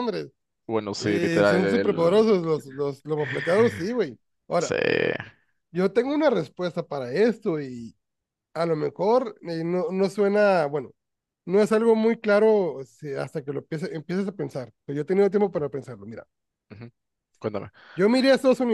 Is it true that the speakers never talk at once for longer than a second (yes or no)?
no